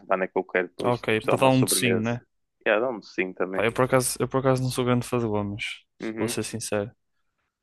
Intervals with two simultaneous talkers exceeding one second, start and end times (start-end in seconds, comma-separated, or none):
0.8-2.1